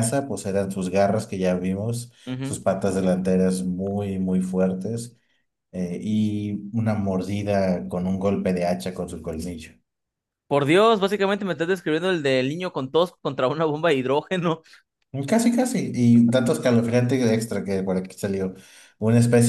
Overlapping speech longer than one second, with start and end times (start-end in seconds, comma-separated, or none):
none